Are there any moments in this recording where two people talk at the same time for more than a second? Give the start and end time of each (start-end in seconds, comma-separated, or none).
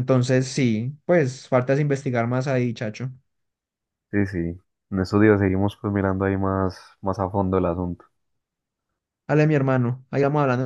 none